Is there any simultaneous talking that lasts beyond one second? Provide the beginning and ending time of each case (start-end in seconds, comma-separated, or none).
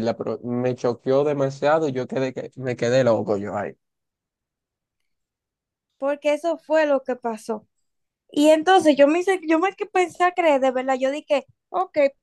none